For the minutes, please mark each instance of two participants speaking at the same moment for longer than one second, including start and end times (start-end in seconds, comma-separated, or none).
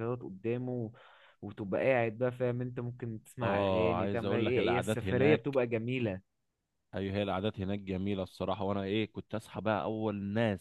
3.4-5.6